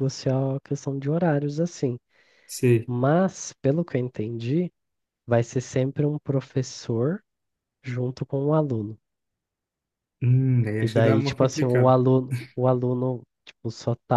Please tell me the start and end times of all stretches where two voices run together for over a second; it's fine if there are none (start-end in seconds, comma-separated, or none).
10.8-12.0